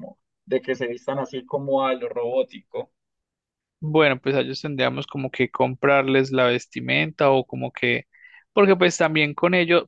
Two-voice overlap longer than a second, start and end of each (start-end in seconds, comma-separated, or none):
none